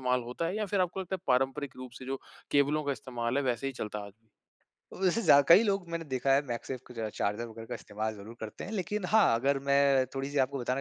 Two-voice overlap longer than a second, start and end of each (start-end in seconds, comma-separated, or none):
none